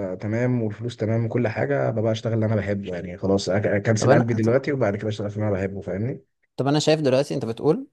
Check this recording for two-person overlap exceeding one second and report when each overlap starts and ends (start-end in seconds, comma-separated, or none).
none